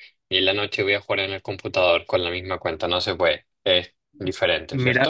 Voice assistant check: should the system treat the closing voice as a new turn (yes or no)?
yes